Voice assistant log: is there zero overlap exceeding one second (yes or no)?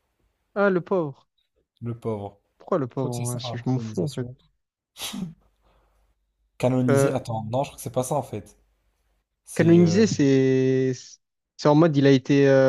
no